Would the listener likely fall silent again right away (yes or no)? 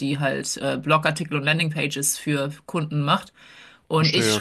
yes